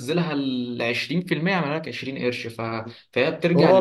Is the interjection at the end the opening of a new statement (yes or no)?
yes